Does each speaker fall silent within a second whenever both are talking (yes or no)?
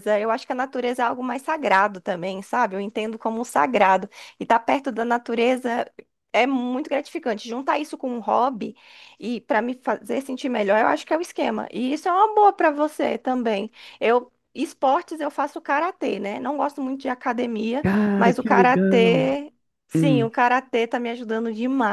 no